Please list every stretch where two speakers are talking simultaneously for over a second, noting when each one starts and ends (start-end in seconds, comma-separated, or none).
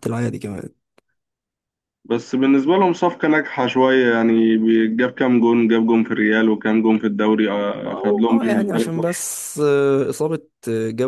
7.8-9.3